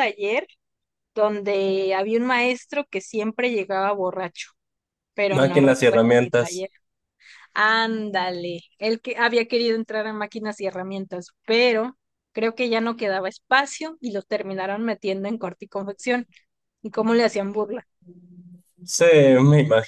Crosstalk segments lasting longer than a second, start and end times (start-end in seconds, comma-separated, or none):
5.3-6.7